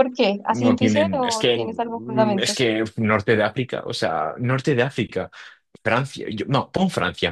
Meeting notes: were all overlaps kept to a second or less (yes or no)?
no